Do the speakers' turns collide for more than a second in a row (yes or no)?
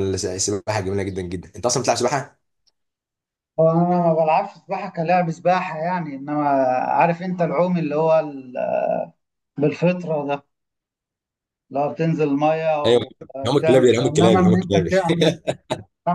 yes